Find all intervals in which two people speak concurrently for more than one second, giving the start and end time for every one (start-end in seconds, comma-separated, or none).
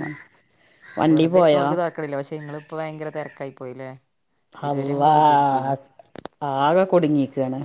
none